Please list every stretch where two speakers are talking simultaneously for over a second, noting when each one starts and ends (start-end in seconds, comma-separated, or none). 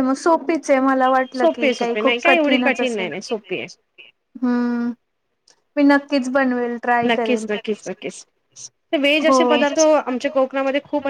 1.3-3.1